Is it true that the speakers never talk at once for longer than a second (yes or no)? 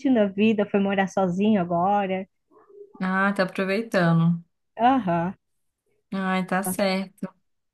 yes